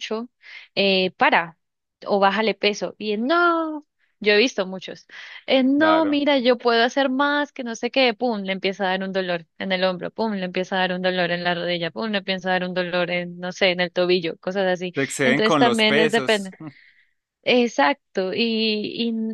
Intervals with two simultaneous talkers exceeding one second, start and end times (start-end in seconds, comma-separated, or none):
14.9-16.5